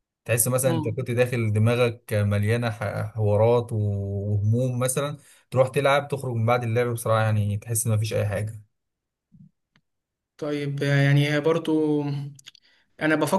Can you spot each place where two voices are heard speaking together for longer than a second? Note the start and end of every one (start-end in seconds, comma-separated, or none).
none